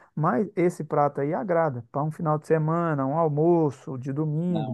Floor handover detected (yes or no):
no